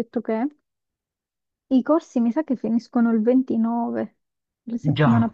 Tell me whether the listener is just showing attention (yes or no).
yes